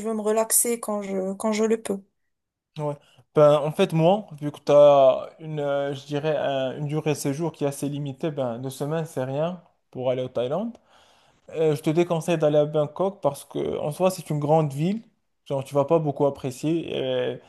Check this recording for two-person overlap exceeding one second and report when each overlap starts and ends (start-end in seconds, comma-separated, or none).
none